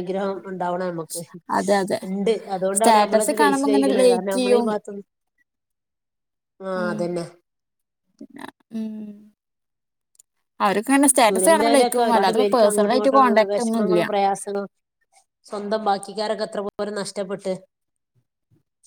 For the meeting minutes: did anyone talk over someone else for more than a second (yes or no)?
yes